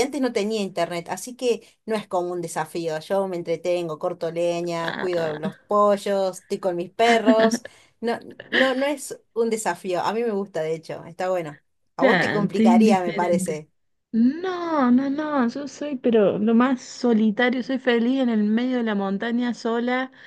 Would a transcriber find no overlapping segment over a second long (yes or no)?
no